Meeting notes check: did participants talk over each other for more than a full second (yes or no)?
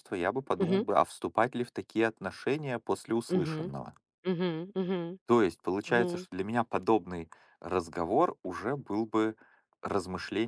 no